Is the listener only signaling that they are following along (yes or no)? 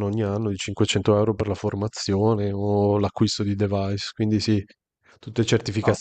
yes